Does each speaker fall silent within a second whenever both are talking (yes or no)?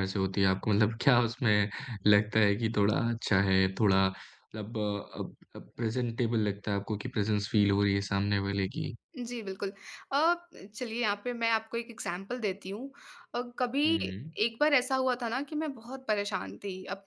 yes